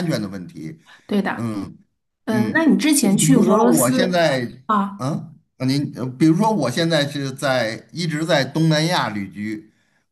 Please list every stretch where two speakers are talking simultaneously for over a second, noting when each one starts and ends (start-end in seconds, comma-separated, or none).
2.3-4.2